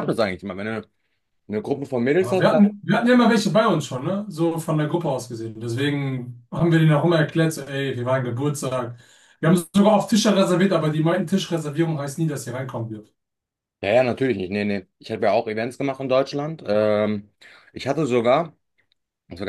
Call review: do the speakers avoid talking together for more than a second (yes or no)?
yes